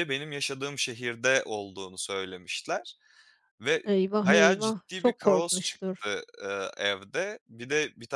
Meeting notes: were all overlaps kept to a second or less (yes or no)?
no